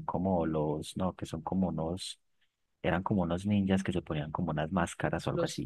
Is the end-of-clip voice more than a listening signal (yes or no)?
yes